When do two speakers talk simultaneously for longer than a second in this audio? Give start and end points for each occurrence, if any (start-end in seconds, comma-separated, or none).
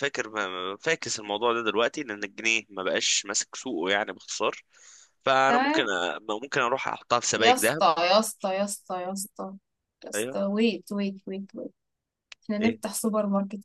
none